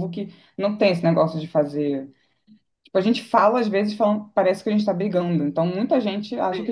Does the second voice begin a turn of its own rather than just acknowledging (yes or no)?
yes